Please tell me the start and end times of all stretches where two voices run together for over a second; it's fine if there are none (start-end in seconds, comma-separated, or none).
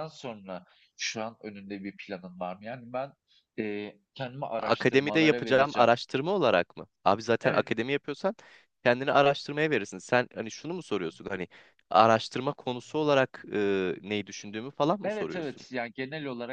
4.6-5.9